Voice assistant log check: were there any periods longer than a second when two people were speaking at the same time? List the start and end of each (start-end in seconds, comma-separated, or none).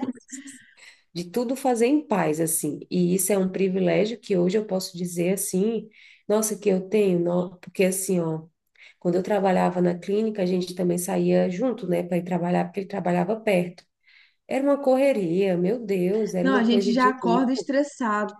16.4-17.7